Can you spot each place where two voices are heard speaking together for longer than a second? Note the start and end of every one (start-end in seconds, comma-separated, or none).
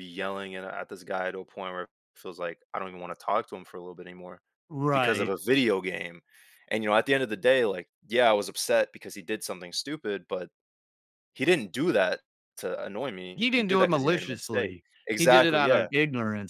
13.3-15.9